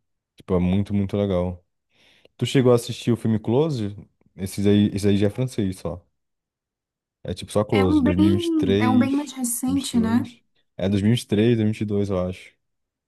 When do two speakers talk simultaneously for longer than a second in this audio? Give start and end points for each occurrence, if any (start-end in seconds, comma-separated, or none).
7.7-10.2